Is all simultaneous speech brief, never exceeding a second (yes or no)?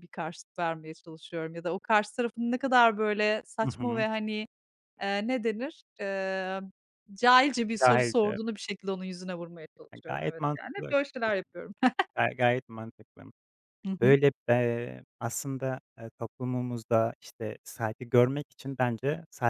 no